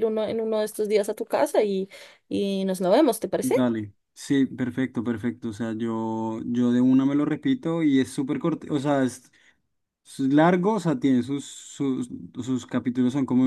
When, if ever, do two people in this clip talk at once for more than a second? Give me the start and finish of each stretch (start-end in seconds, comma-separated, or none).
none